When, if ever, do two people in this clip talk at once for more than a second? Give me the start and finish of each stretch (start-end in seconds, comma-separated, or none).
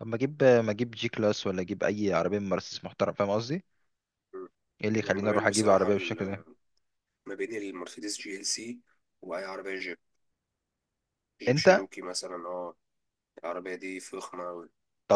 5.0-6.4